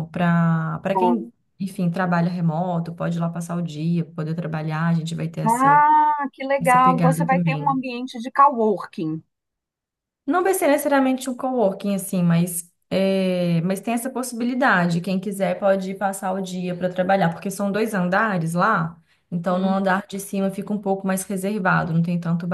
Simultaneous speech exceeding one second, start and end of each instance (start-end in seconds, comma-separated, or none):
6.6-7.8